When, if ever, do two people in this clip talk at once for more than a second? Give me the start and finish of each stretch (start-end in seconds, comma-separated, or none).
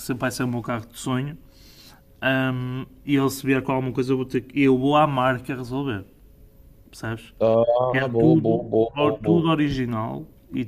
7.9-9.4